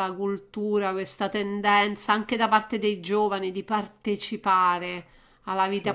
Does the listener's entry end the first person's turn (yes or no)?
no